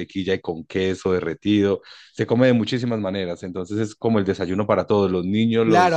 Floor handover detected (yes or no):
yes